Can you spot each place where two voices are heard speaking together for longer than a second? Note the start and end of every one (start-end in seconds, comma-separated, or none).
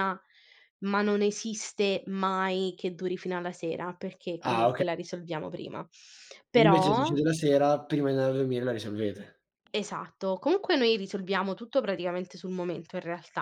none